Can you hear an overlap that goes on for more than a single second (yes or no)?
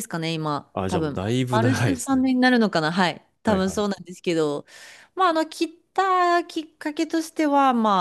yes